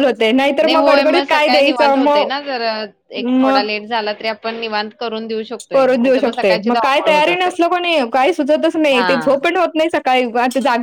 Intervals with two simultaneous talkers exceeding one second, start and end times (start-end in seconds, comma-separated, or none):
0.7-2.2, 5.7-7.5